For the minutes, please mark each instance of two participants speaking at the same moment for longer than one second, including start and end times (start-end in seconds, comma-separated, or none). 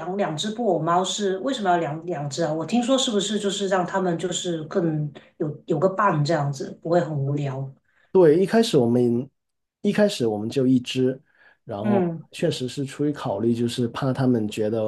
none